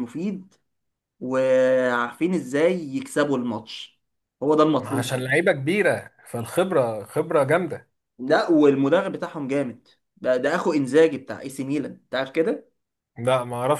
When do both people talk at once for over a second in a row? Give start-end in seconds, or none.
none